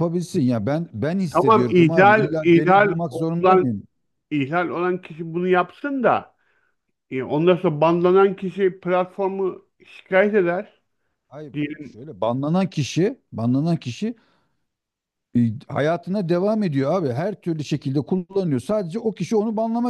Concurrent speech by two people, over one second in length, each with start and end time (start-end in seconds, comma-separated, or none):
1.3-3.7